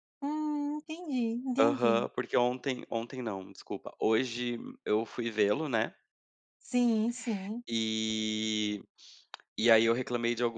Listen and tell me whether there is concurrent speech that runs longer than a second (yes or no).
no